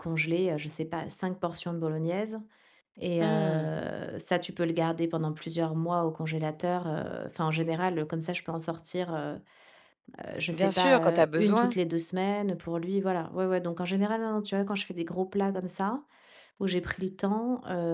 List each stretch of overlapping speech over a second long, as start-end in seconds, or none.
10.5-11.8